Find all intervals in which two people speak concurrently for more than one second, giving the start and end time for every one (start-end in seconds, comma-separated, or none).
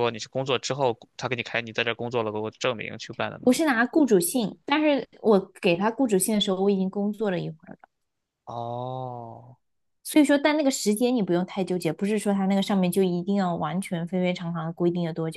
none